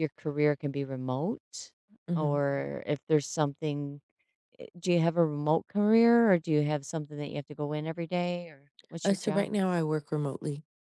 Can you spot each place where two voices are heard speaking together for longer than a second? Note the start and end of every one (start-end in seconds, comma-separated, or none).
none